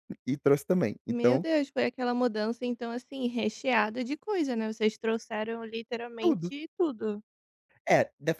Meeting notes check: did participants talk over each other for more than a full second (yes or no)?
no